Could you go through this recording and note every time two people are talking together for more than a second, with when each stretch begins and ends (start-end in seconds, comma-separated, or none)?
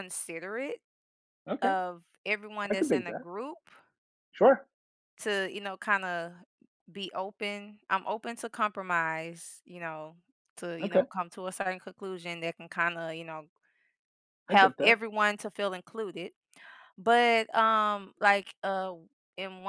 none